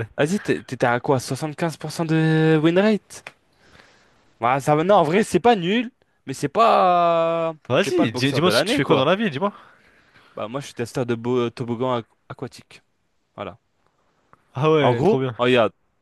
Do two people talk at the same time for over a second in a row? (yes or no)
yes